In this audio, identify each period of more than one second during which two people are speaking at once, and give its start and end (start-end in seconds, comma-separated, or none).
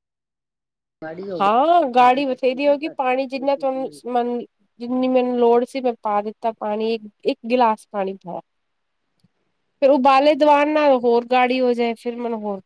1.4-4.1